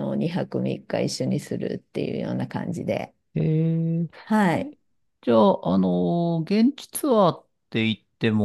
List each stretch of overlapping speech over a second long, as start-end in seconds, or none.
none